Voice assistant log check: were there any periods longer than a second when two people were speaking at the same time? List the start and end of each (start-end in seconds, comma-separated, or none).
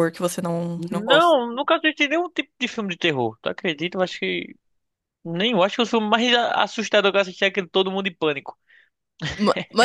none